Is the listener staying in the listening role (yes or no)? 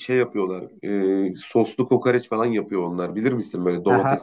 no